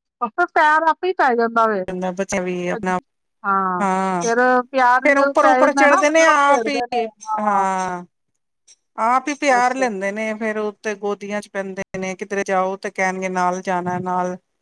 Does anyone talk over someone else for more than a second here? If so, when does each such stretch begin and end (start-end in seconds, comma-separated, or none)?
5.0-7.1